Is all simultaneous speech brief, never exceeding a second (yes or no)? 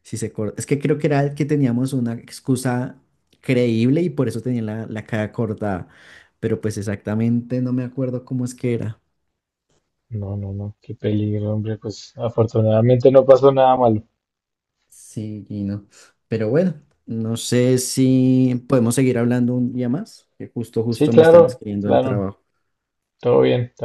no